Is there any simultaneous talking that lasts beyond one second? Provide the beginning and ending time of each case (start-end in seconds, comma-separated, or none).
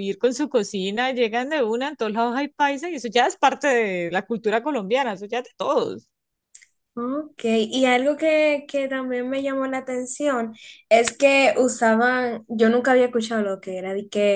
none